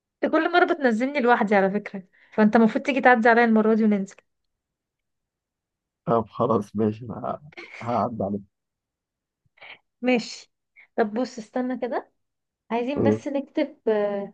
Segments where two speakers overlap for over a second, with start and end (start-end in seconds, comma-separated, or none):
none